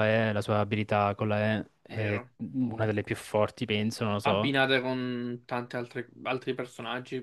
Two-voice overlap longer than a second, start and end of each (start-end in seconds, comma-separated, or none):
none